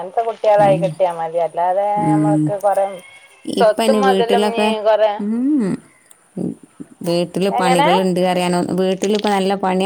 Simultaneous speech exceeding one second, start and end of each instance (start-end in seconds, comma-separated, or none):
none